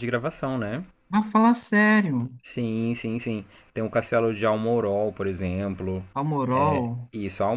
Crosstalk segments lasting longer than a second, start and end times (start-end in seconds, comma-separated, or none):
none